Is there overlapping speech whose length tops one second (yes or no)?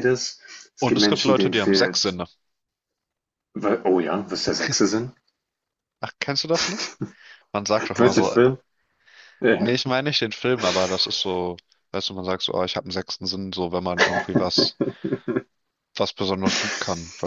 yes